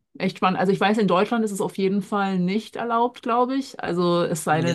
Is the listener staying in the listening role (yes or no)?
no